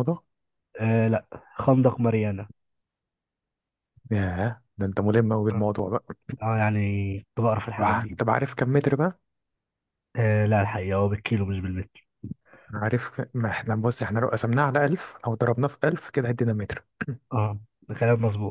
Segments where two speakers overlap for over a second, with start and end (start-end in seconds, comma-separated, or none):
none